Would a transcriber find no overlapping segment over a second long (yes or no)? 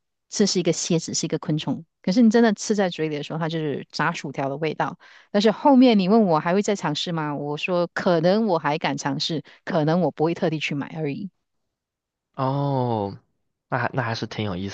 yes